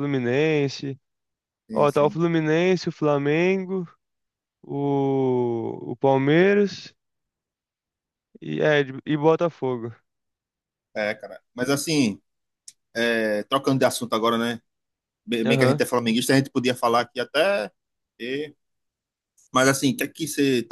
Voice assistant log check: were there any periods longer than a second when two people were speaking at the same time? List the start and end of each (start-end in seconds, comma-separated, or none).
none